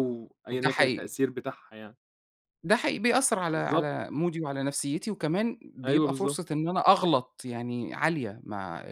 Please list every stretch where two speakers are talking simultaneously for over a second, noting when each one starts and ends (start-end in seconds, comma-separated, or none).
none